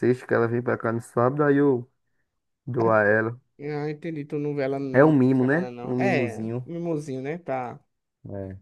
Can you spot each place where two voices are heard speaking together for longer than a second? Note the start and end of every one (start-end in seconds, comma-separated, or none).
4.9-6.7